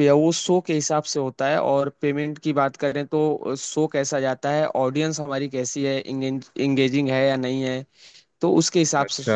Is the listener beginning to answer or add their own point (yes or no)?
no